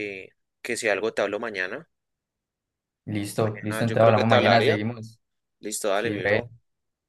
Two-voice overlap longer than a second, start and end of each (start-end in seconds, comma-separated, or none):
3.4-4.8